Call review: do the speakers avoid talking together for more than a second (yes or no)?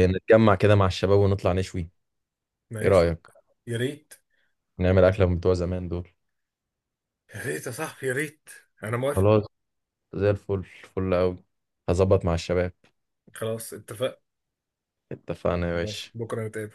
yes